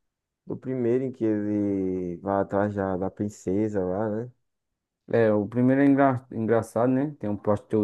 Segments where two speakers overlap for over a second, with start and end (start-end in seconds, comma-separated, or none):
none